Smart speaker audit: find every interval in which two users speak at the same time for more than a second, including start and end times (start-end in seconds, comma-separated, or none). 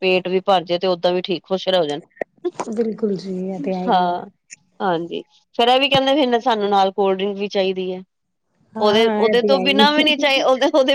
8.8-10.2